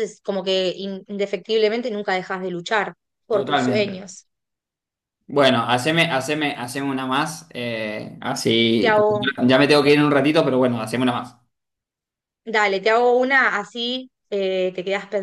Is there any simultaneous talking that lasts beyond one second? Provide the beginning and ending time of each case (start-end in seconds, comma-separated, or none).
none